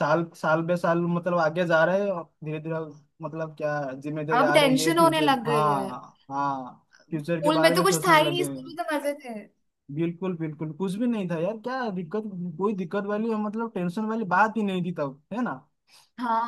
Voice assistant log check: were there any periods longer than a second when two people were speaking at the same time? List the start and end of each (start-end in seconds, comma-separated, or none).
4.4-5.9, 7.1-8.8